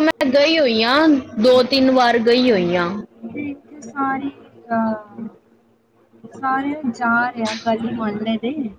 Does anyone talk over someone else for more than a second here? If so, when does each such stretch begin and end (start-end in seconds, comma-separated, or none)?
none